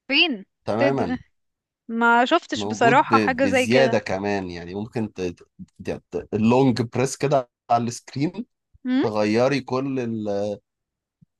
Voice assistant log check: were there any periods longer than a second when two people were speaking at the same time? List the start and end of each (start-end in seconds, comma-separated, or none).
2.5-4.0